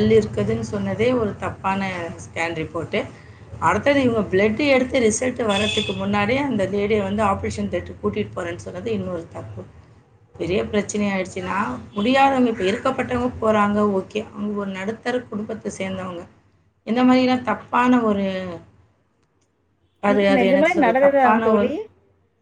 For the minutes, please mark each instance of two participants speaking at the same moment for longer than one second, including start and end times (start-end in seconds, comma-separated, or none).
20.1-21.7